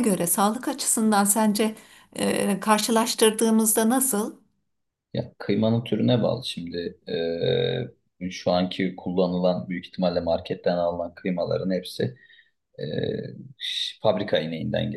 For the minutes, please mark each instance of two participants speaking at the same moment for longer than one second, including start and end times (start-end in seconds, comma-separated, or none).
none